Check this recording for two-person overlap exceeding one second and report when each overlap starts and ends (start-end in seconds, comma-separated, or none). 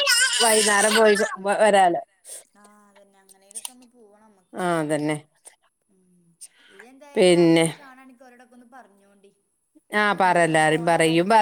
none